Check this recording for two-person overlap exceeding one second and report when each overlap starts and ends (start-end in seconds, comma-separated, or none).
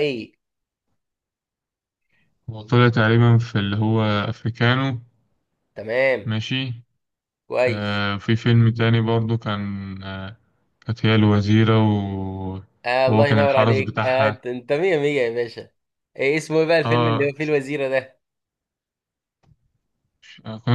13.1-14.4